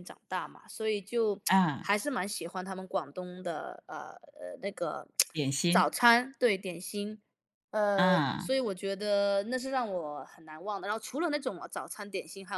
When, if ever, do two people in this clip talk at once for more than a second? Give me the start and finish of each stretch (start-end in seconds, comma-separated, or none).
none